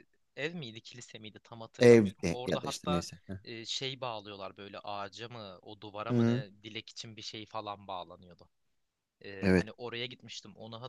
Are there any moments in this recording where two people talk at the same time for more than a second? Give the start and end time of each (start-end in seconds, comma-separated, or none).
1.8-3.0